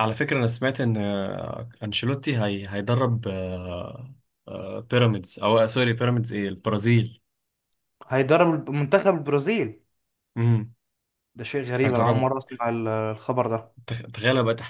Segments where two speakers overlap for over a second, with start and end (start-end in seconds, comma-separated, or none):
none